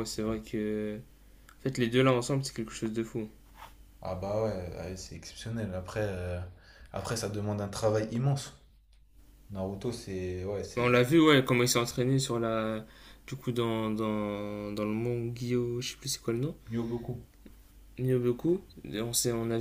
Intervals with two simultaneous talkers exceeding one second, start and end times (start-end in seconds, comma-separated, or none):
none